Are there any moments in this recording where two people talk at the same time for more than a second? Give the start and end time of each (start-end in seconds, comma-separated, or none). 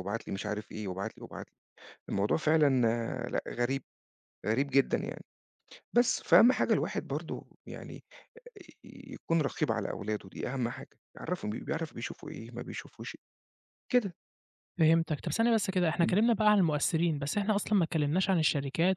none